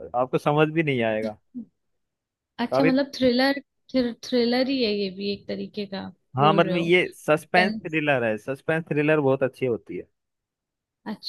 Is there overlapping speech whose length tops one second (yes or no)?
no